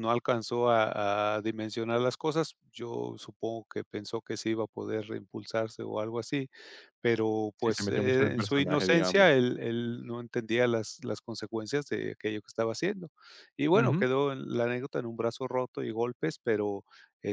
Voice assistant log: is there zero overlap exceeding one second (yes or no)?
no